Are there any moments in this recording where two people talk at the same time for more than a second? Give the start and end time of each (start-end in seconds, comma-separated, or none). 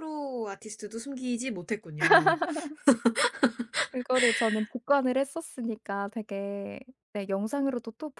none